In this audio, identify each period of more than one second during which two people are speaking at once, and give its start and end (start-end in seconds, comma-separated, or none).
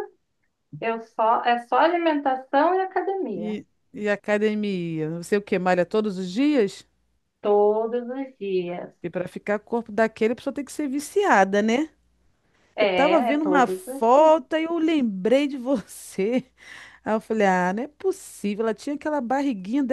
12.8-14.5